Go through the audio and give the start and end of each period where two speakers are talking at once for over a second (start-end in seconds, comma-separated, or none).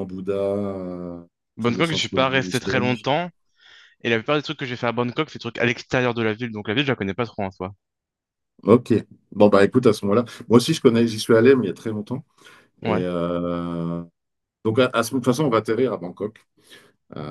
1.6-3.1